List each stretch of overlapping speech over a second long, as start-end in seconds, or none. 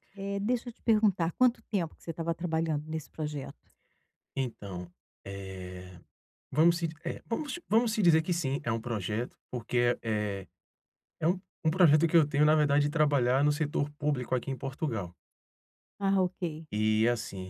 none